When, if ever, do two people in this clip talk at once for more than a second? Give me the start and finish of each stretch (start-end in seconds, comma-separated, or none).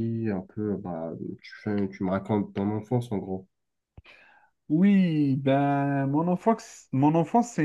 none